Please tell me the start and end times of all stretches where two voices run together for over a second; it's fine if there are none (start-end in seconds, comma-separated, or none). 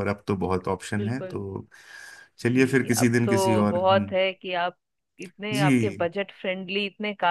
2.5-4.1